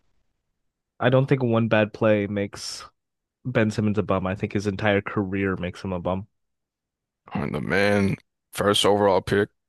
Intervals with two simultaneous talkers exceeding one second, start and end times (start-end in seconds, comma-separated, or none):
none